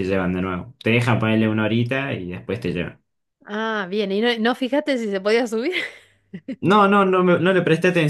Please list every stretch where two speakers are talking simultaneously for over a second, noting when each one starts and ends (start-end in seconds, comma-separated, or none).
none